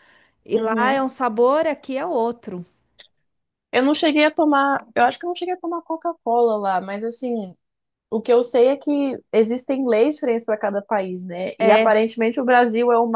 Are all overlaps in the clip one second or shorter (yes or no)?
yes